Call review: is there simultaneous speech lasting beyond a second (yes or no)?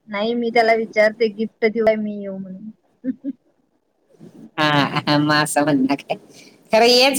no